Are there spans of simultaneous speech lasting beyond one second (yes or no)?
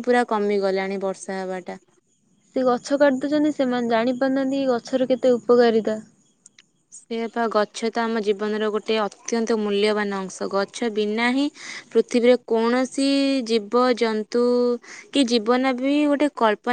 no